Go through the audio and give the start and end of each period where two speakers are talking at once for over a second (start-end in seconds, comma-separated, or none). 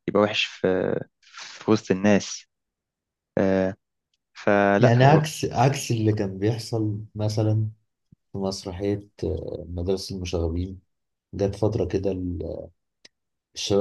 none